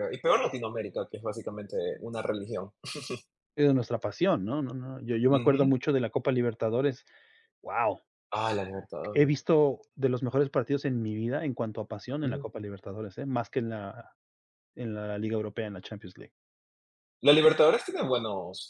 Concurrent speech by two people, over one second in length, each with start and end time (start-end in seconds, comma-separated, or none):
none